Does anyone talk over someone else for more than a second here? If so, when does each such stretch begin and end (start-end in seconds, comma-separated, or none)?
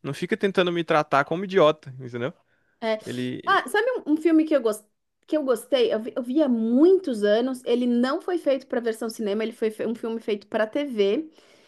none